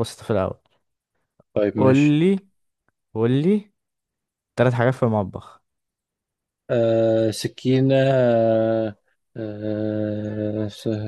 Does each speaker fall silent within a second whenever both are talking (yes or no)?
yes